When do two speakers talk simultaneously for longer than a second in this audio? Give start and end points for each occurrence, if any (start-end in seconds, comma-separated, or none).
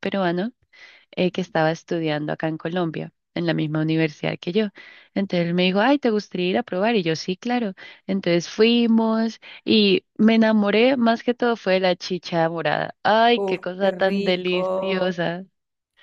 13.3-15.2